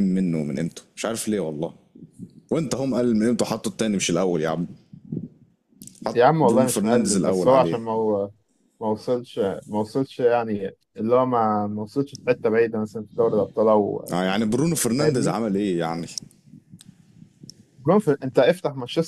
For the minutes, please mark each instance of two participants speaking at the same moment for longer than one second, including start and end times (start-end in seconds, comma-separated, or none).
6.1-7.8